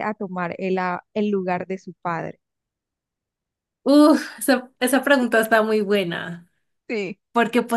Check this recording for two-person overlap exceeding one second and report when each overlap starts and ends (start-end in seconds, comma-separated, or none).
none